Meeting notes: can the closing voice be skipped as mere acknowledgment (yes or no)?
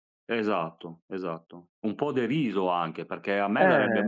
yes